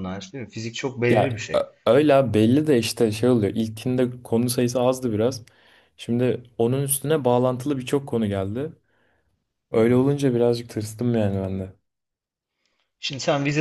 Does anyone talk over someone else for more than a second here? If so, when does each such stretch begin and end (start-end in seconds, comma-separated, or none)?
none